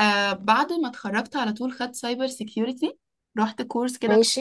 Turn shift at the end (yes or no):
no